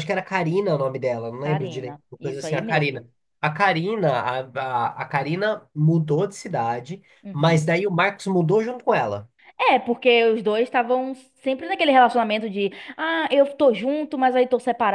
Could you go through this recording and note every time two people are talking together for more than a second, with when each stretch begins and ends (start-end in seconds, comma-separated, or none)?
1.4-3.0